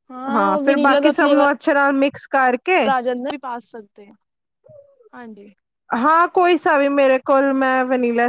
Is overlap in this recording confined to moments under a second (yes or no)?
yes